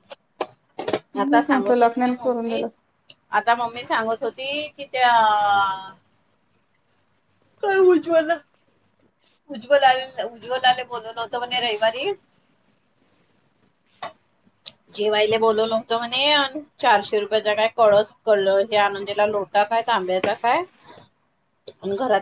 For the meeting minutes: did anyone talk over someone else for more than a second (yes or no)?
yes